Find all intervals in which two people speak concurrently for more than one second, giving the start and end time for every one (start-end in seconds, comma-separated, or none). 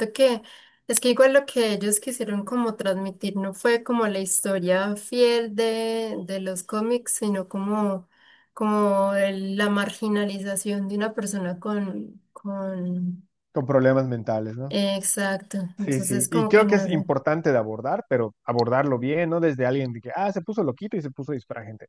15.8-17.0